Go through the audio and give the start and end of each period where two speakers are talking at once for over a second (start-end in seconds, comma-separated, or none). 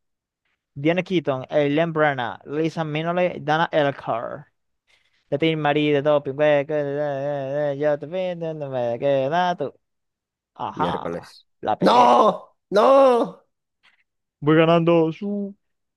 10.7-12.2